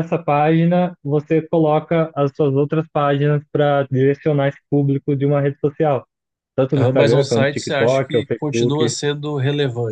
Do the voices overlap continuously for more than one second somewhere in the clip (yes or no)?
yes